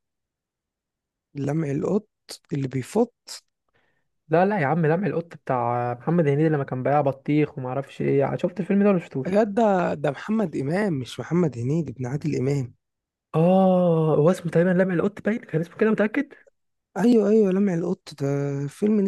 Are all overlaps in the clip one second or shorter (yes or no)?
yes